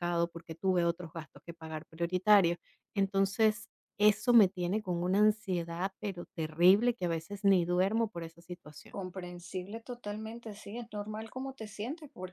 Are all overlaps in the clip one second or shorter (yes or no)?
yes